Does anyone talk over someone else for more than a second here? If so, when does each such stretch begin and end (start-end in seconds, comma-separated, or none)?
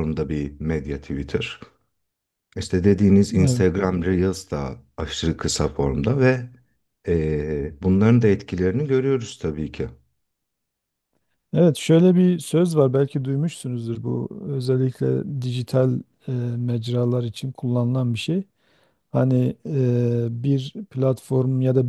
none